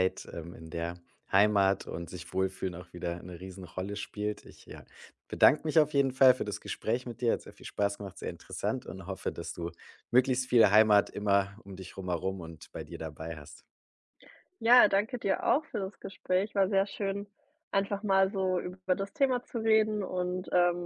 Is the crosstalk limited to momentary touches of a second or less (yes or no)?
yes